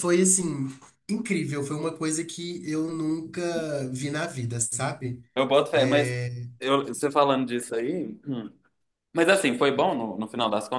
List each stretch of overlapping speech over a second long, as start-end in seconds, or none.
none